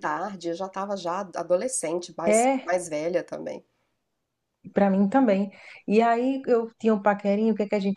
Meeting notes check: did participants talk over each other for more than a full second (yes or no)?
no